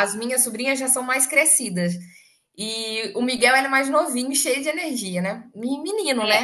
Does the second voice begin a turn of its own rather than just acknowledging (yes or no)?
yes